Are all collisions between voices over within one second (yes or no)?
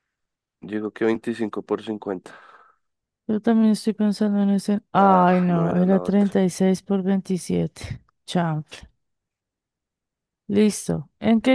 no